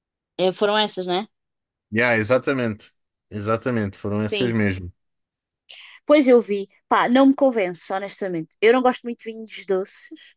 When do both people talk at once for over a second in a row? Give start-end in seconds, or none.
none